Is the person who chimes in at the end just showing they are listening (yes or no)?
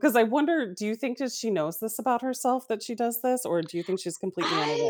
no